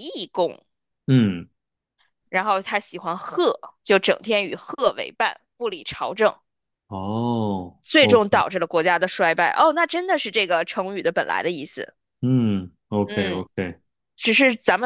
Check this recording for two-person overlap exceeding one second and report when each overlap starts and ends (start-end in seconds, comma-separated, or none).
none